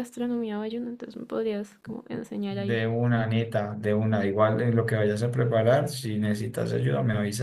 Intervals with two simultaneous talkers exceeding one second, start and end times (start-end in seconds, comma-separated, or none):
none